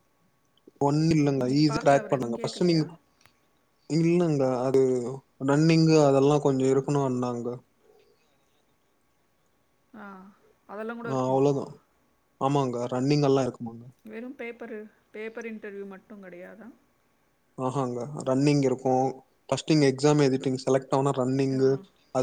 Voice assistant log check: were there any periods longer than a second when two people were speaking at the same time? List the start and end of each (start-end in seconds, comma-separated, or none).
1.4-2.8